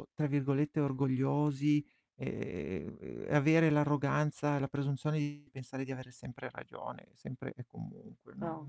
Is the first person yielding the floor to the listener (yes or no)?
no